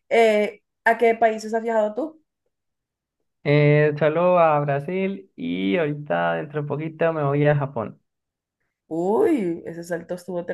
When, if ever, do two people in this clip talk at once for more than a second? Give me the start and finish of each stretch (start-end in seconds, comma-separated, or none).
none